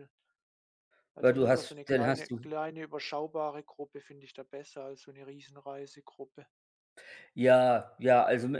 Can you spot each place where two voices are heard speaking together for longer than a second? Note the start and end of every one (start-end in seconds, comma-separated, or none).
1.2-2.4